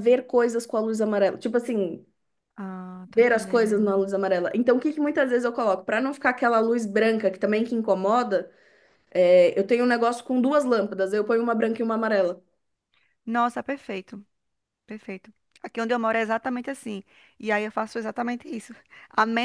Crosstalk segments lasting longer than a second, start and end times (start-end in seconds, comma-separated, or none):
none